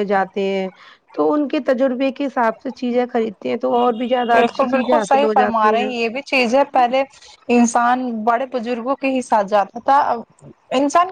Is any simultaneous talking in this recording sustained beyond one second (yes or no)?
yes